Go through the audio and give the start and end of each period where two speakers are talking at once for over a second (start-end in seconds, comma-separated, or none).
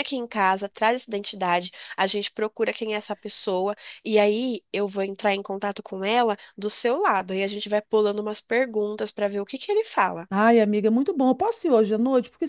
none